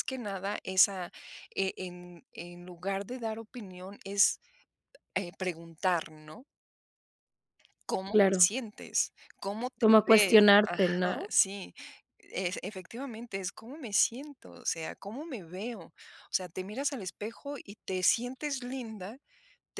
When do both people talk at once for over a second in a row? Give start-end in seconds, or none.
9.8-11.3